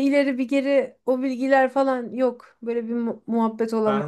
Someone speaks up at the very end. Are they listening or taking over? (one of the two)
taking over